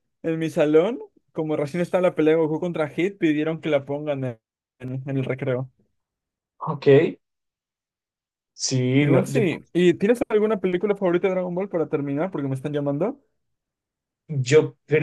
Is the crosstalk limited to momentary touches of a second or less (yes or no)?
yes